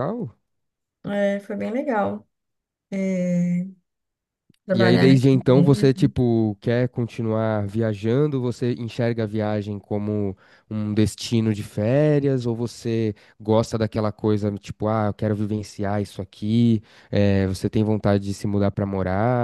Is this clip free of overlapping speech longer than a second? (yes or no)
no